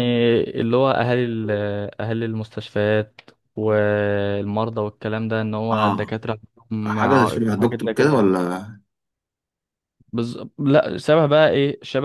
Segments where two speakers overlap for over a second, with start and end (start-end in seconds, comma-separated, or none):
6.8-8.3